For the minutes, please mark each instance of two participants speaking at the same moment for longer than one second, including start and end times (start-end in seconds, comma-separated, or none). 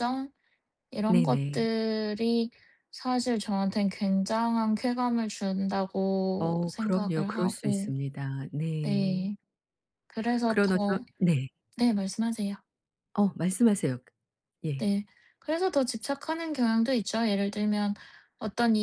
6.4-7.9